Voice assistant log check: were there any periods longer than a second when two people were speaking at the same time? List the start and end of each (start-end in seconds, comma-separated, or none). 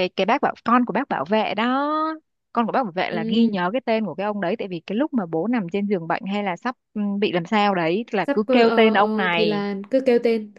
8.3-9.6